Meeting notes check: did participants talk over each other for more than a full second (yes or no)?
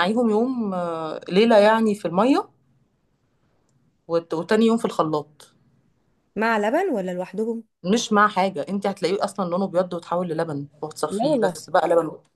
no